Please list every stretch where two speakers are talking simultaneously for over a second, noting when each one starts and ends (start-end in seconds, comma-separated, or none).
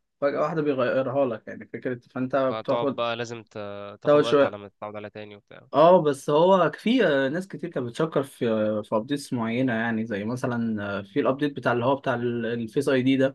none